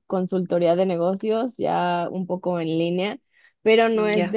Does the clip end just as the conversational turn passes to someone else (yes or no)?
no